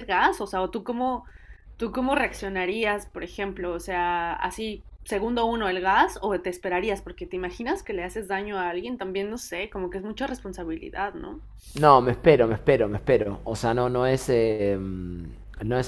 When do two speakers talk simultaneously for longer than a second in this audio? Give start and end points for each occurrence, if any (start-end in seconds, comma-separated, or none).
none